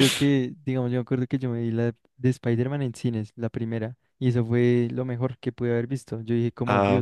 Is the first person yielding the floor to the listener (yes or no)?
yes